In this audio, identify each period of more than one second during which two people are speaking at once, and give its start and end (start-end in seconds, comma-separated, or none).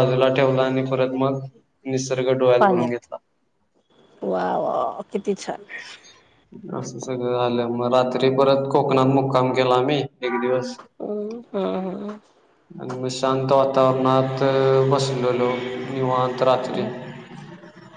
none